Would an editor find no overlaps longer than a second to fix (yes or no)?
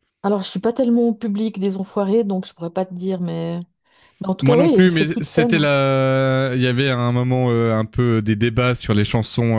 no